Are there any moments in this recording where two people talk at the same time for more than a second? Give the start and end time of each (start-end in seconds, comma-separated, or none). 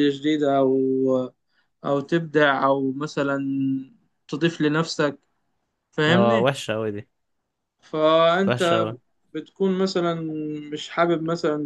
none